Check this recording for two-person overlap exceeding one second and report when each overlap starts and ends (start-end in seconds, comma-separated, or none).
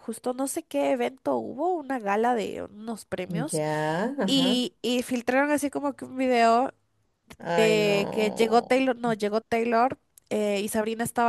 7.6-8.8